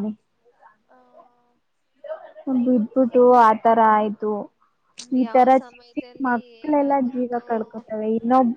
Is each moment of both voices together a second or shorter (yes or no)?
no